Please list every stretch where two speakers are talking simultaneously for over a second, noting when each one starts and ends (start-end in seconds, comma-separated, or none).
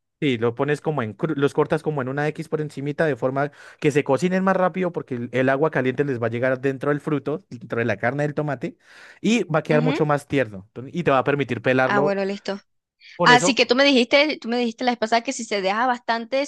none